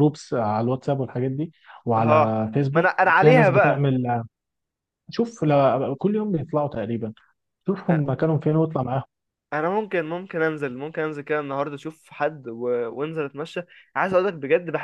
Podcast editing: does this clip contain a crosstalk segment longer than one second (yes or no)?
yes